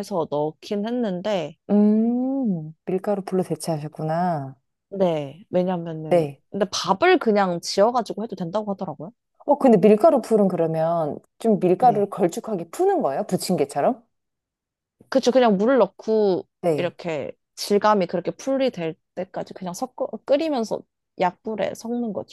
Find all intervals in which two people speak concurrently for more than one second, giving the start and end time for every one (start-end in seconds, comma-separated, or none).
none